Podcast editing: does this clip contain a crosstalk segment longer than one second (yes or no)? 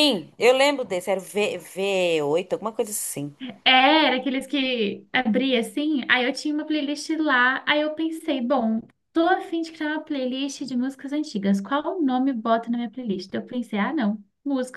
no